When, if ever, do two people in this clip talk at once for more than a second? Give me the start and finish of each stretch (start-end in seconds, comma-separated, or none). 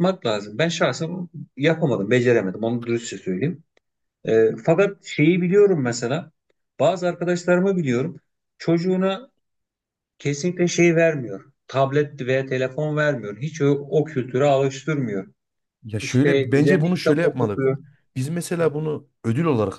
16.0-17.6